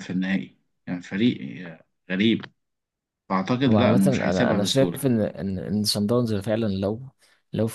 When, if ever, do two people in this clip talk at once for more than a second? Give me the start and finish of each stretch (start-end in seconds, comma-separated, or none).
3.7-5.1